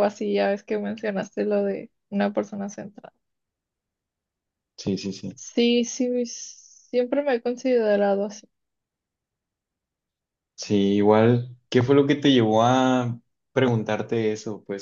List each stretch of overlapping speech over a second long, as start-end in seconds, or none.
none